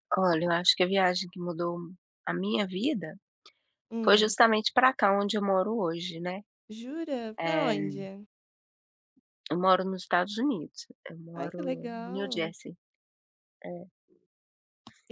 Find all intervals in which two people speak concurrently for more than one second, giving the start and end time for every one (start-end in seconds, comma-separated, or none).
11.3-12.5